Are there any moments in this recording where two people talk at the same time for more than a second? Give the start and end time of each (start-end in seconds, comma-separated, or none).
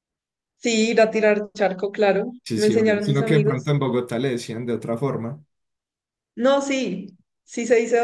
2.4-3.7